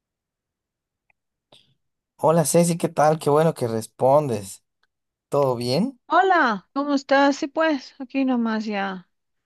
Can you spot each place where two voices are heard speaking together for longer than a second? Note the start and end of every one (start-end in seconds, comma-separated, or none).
none